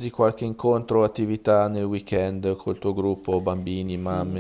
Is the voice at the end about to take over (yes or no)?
yes